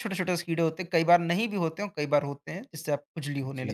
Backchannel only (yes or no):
no